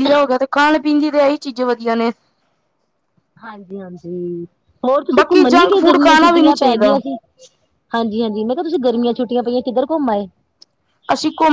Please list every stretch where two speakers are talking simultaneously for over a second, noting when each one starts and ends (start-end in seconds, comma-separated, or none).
5.2-6.9